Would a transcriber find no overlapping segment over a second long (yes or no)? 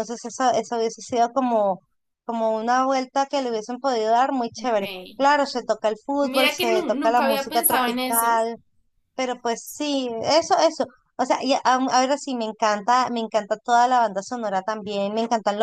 no